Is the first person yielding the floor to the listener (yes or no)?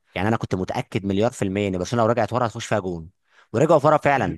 no